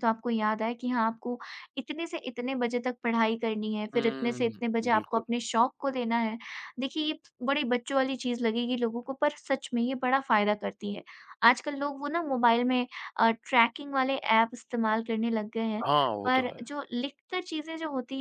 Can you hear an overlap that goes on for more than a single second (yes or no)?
yes